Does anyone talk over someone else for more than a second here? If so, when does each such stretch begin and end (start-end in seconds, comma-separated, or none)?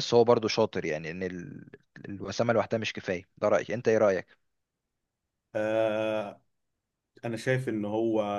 none